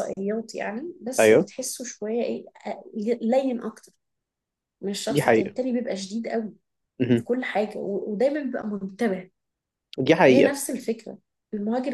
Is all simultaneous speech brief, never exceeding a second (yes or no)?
yes